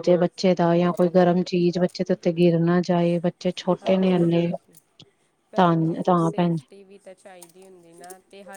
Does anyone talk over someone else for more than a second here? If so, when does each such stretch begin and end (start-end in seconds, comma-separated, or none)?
none